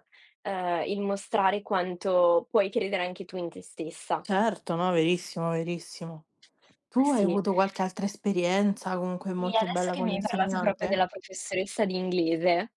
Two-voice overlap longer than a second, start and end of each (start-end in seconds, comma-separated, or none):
9.3-11.0